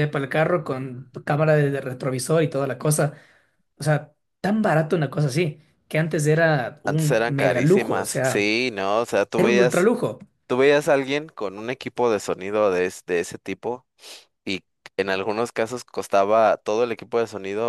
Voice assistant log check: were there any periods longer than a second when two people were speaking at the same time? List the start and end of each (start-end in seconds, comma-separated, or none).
6.8-8.5